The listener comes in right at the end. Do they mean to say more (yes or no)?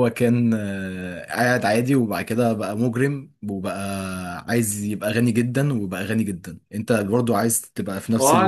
yes